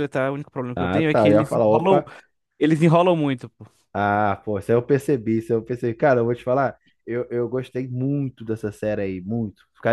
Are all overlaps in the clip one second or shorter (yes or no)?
no